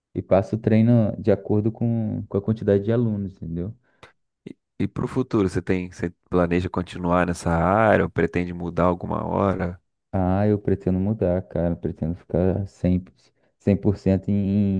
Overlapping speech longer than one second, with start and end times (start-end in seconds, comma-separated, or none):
none